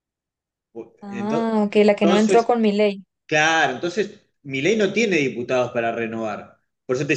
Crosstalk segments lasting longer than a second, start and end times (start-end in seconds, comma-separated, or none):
1.1-2.5